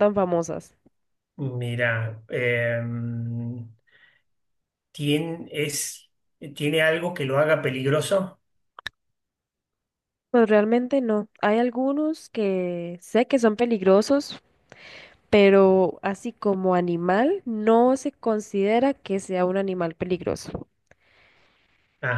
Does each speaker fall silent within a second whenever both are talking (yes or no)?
yes